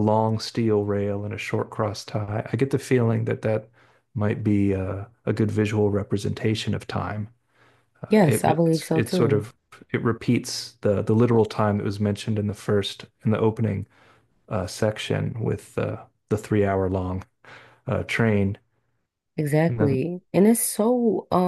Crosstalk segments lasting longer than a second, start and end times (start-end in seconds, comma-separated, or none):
8.1-9.4